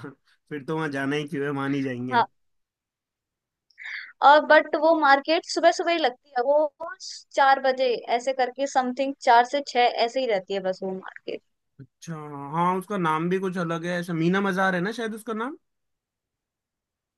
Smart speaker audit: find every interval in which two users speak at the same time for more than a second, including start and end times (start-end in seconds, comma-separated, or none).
none